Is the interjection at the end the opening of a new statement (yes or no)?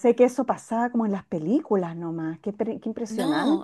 yes